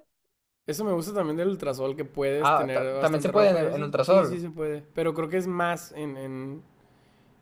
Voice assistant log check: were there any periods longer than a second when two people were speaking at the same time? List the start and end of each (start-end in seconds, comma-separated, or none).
2.4-4.4